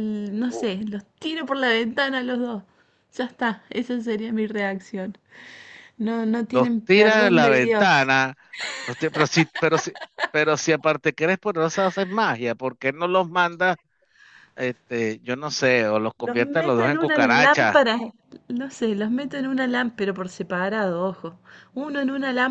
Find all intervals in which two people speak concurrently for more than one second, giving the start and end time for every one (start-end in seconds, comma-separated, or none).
6.5-8.1, 16.2-17.8